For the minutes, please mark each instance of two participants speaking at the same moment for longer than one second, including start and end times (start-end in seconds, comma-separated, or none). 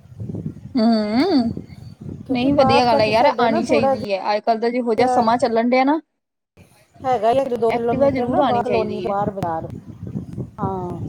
2.3-3.9, 7.8-9.2